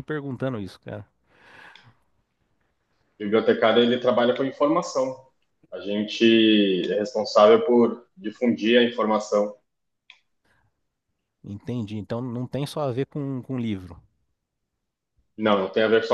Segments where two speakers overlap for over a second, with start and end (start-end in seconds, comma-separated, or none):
none